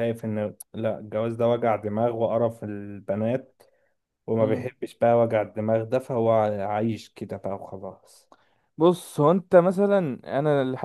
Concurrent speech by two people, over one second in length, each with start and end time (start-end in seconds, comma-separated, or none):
none